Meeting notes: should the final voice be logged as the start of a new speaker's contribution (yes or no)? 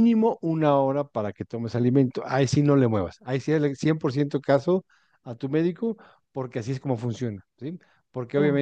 no